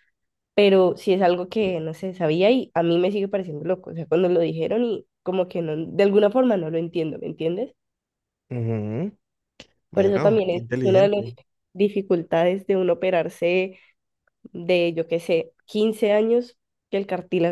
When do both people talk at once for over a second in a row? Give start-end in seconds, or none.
9.9-11.2